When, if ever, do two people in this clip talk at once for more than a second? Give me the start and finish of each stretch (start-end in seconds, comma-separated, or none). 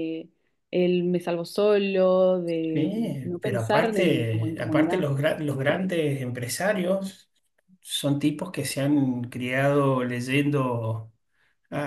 2.7-5.0